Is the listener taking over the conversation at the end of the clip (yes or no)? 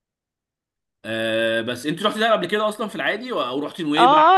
yes